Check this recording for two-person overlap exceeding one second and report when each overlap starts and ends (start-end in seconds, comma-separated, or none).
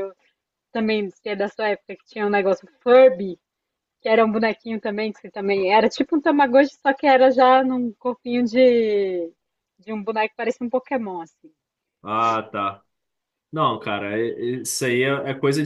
none